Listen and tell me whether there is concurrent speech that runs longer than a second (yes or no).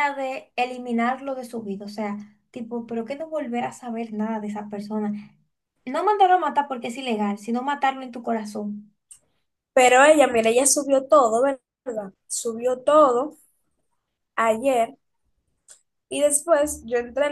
no